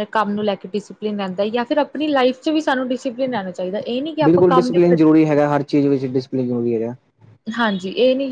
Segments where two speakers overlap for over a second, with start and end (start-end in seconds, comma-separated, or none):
none